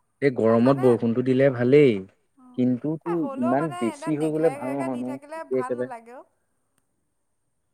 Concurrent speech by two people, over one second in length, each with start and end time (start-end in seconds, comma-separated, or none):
3.1-5.9